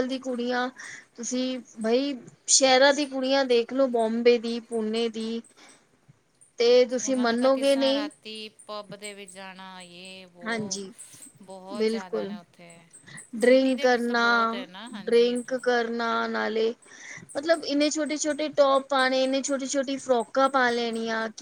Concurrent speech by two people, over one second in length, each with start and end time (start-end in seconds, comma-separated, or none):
none